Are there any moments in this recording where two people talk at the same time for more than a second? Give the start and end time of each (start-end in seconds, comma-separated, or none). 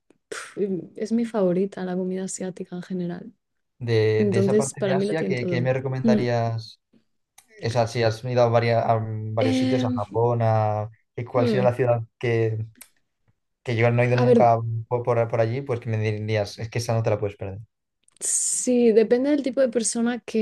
4.2-6.2